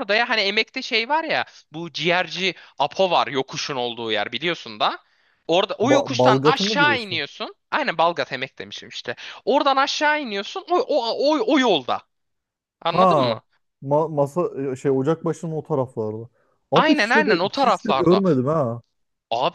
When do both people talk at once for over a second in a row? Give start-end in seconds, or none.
5.8-7.2, 16.7-18.2